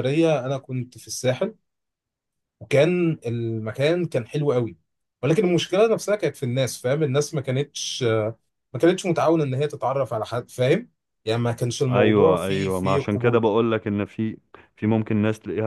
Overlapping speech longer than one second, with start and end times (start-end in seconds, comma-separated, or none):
11.9-13.4